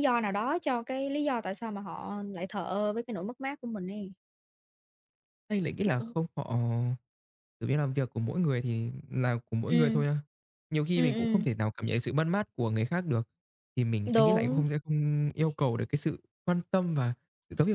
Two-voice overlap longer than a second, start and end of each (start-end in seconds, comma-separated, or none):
none